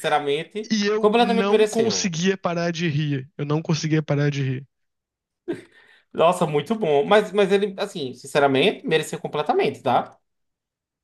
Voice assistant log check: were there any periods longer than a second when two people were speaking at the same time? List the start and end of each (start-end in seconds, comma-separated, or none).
0.7-2.1